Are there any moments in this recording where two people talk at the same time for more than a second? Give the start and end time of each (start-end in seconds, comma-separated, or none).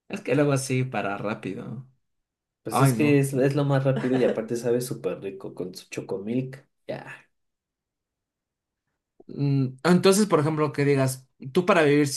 none